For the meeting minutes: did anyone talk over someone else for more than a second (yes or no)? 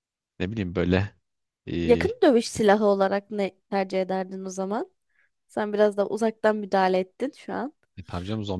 no